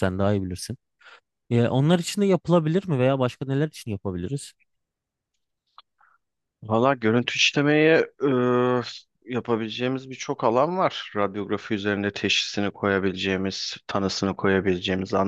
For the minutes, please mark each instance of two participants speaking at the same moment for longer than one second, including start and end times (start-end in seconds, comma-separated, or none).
none